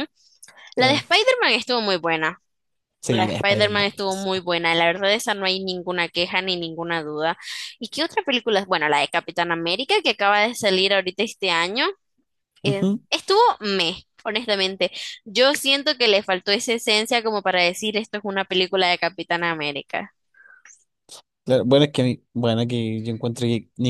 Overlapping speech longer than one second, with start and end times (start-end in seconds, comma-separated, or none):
3.1-4.3